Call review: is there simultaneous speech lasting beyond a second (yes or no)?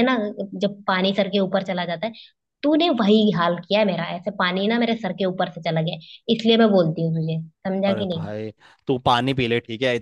no